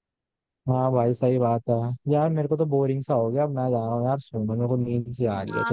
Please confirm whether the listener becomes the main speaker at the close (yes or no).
yes